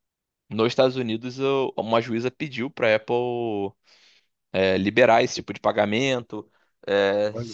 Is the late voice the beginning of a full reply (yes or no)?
no